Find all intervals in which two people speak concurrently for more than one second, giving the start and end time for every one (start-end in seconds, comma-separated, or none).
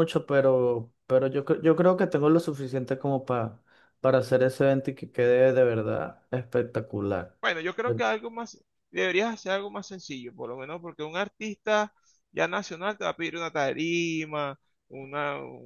none